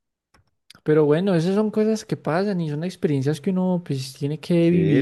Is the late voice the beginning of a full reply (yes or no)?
yes